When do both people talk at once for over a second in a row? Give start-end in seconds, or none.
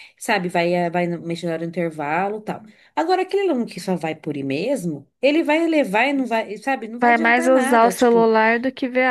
7.0-8.3